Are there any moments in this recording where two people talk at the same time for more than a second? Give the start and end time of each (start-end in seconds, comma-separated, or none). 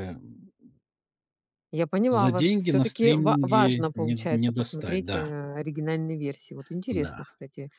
2.1-5.3